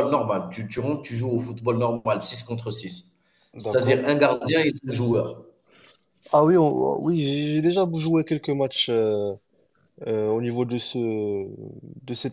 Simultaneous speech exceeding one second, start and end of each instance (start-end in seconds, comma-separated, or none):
none